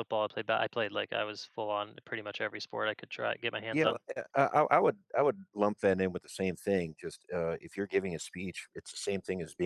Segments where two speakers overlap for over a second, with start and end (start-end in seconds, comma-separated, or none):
none